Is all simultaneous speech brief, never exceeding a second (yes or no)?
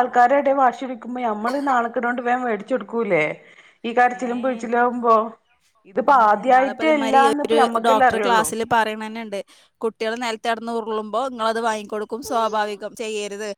no